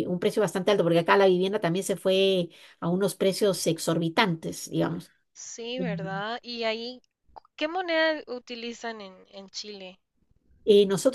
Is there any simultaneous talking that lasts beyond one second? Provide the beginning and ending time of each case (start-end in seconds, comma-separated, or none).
none